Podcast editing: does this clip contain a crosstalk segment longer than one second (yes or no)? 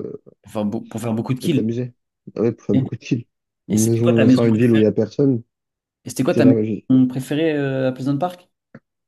yes